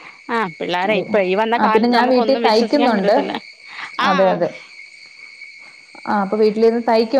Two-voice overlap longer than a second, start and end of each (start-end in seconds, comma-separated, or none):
1.6-3.1